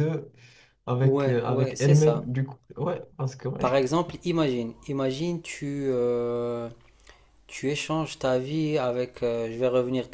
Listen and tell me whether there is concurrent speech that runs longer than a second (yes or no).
yes